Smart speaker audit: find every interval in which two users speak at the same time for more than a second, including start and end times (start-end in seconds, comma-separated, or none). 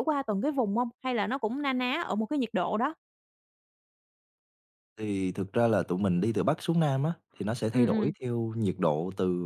none